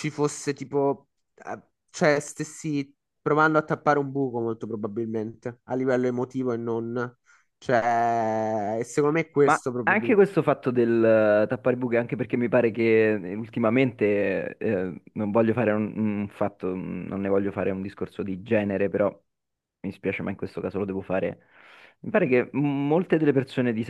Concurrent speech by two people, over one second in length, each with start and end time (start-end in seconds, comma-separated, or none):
none